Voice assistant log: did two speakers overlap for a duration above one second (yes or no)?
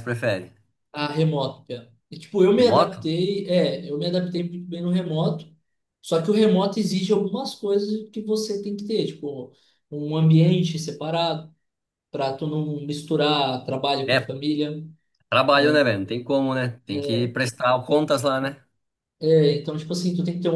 no